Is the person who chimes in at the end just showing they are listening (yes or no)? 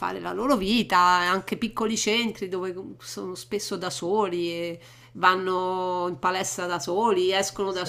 yes